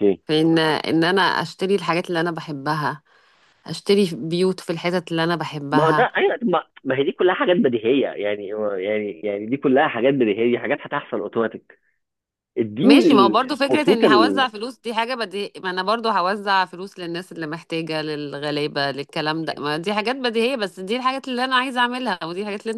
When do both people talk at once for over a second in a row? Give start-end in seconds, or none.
12.8-14.5